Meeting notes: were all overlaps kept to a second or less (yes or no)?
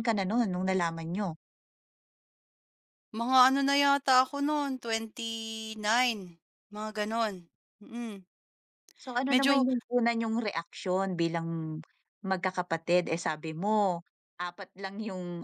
yes